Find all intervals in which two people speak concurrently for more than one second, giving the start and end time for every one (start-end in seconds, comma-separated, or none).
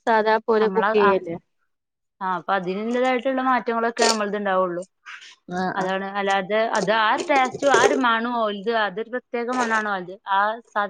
none